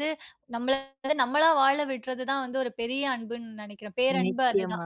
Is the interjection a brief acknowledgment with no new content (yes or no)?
yes